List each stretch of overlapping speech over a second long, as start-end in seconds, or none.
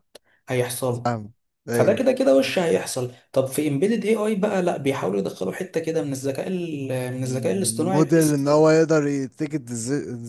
7.2-8.5